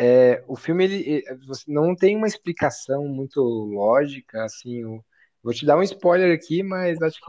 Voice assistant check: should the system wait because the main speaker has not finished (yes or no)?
no